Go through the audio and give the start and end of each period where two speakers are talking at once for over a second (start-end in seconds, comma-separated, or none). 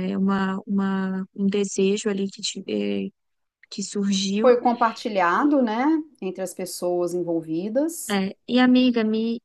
none